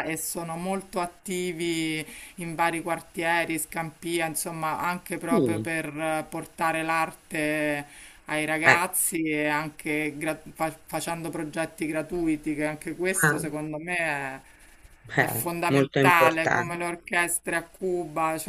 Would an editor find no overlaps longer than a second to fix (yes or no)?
no